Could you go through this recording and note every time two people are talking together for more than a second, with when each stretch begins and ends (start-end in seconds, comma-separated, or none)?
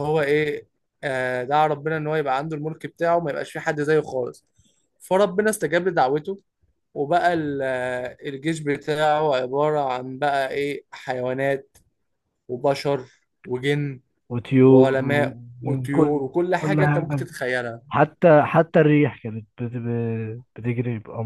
14.7-17.3